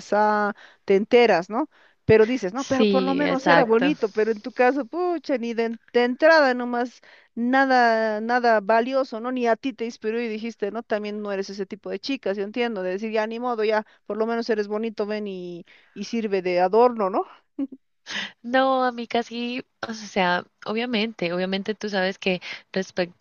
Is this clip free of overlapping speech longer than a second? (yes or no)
no